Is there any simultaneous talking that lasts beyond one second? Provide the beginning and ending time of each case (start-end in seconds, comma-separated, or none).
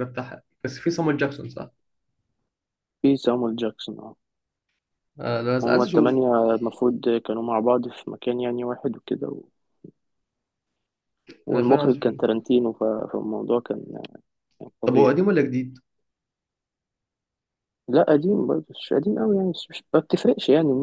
none